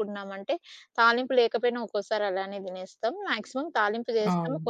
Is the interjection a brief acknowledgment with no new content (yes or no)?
yes